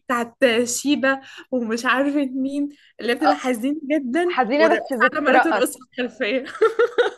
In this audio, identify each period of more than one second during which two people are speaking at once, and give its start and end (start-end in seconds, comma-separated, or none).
4.3-5.9